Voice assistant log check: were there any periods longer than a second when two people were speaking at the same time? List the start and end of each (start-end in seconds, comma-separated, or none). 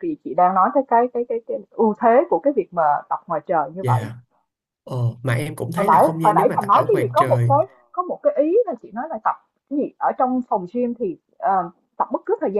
5.8-7.5